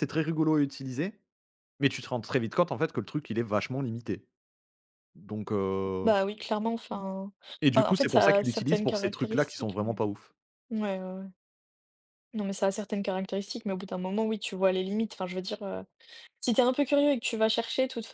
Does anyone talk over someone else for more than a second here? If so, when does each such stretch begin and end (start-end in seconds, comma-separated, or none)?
7.8-9.9